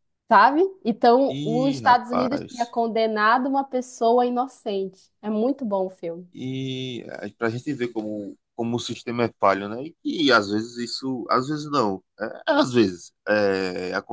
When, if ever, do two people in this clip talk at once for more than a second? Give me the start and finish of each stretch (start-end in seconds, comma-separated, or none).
1.3-2.8